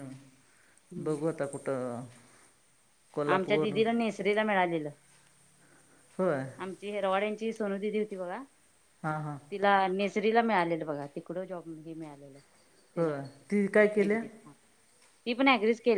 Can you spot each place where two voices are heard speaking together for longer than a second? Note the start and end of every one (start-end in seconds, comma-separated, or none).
none